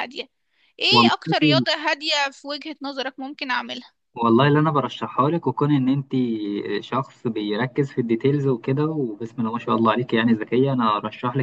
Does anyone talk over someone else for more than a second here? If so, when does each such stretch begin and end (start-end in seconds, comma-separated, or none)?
none